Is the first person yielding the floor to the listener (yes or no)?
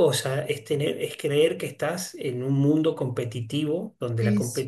no